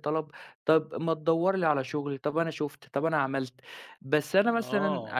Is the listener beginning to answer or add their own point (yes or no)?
yes